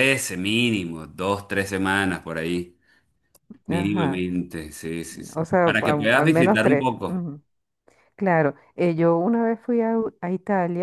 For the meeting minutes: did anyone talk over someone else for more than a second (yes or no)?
yes